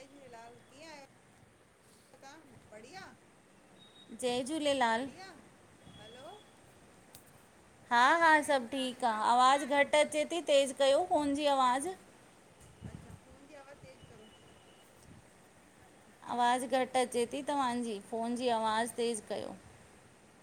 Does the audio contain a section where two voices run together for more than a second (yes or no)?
yes